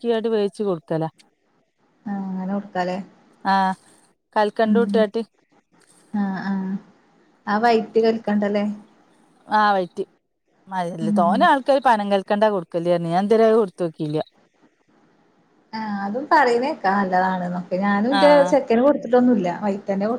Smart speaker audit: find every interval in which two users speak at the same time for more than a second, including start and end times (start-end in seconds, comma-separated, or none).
none